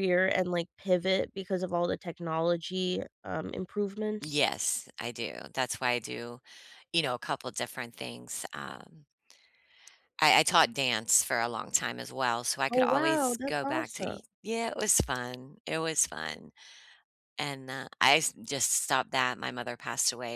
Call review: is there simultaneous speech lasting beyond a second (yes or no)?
yes